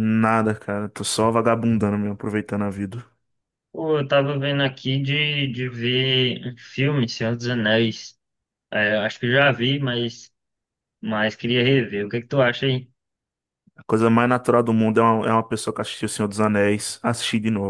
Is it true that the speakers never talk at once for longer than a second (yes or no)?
yes